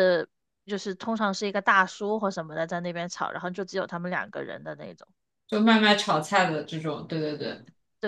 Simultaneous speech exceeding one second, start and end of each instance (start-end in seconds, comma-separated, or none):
none